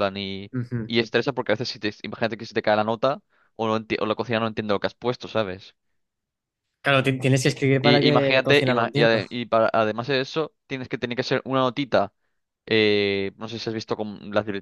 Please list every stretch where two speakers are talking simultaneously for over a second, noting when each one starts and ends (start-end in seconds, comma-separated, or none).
7.8-9.2